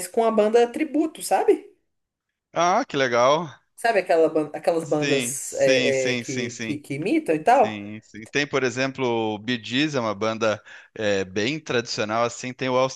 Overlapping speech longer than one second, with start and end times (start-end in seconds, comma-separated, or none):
4.8-6.8